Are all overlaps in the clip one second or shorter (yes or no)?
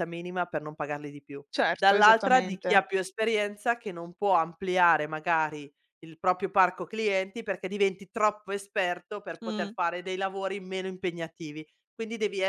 no